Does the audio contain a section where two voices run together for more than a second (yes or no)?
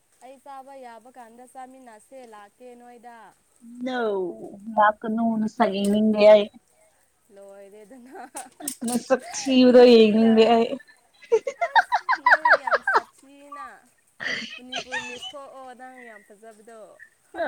no